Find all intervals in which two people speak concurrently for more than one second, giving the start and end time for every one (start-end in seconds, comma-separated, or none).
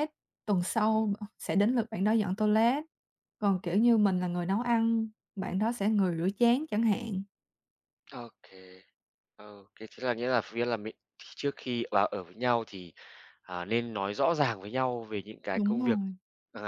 none